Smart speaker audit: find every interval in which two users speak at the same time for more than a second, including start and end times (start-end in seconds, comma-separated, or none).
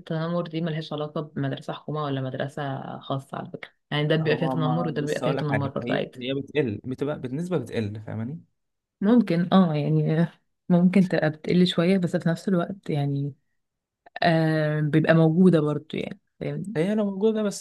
4.2-6.2